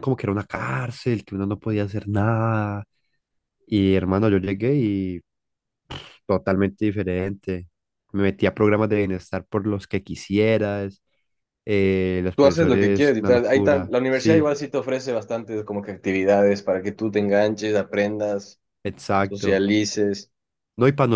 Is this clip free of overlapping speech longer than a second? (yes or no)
no